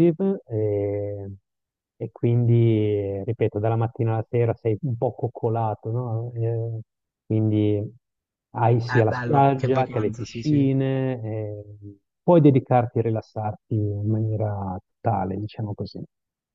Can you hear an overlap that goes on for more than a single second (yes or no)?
yes